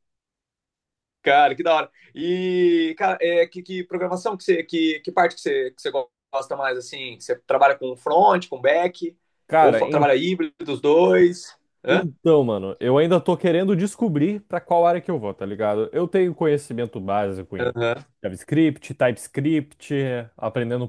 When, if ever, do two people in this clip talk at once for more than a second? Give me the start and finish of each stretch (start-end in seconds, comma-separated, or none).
none